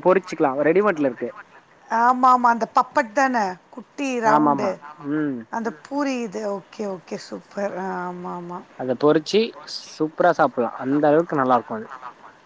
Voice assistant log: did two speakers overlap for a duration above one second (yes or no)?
no